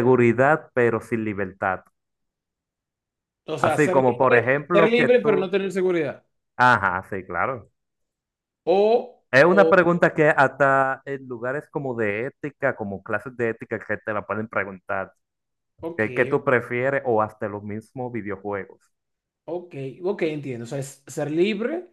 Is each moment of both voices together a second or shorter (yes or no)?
no